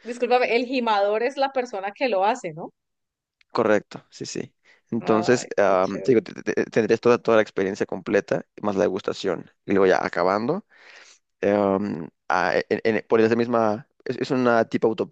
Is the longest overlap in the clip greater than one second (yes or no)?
yes